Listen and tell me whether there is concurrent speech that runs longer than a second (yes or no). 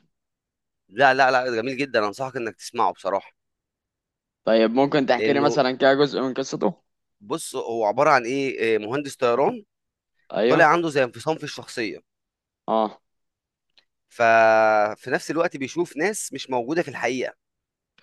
no